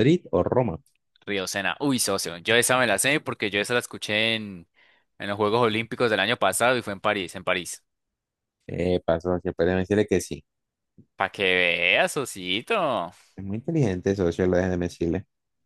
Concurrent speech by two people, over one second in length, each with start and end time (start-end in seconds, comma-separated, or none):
none